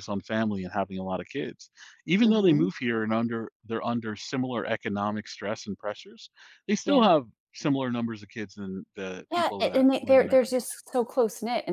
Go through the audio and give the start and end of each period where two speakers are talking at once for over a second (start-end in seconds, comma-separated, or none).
9.3-10.8